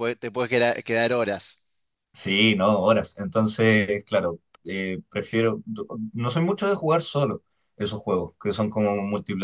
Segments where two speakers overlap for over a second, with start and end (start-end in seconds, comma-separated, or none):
none